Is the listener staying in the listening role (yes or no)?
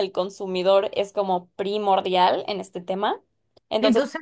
yes